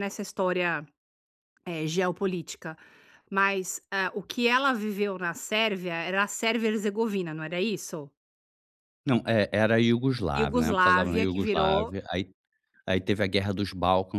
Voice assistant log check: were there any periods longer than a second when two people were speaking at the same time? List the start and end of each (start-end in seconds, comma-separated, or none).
10.3-11.9